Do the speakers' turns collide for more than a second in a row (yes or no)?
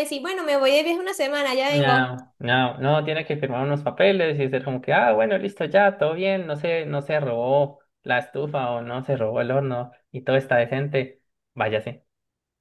no